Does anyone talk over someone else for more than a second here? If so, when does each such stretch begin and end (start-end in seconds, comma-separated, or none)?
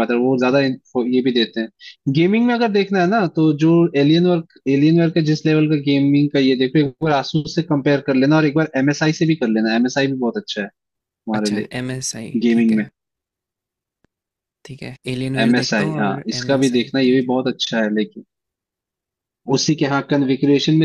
15.5-17.4